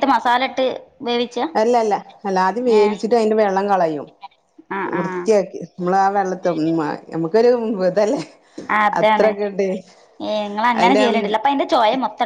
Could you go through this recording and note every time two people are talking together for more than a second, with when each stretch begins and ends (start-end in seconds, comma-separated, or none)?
none